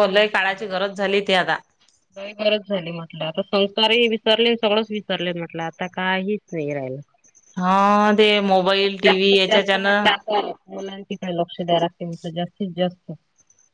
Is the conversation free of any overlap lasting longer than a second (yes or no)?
no